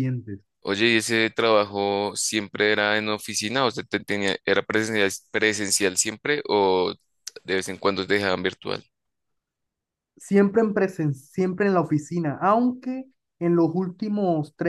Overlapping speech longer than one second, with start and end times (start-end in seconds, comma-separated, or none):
none